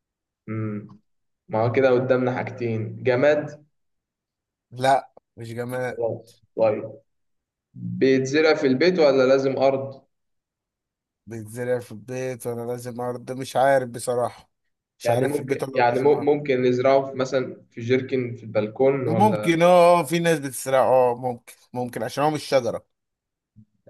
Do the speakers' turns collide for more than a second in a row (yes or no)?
yes